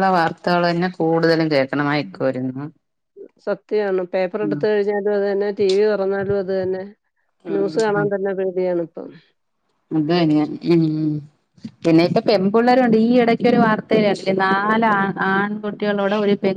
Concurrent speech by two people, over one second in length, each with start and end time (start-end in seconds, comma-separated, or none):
none